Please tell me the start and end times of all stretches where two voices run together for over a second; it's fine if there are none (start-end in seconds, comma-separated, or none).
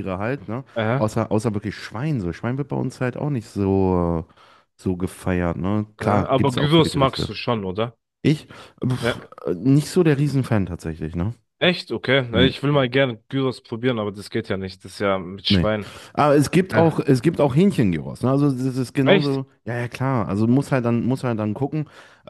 6.0-7.3